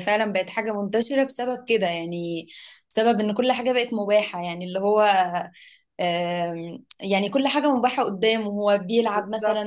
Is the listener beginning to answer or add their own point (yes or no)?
no